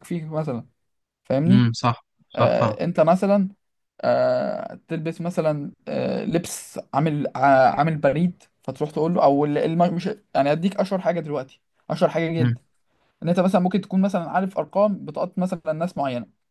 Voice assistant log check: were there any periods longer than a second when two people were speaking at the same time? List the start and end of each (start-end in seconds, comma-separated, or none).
none